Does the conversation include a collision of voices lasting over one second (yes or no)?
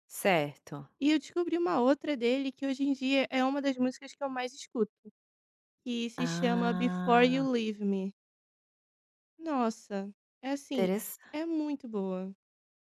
yes